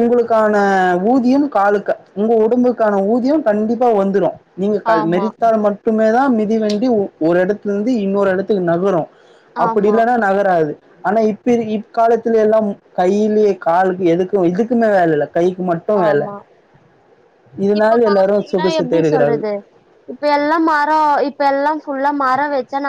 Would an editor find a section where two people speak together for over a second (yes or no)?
yes